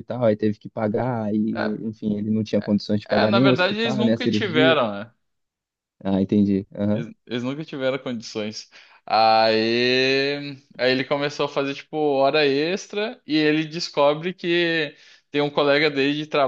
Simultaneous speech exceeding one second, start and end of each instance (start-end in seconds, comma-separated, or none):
3.0-4.8